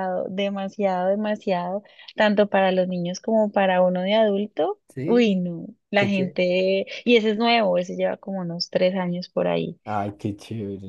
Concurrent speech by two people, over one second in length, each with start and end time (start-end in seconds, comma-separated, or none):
none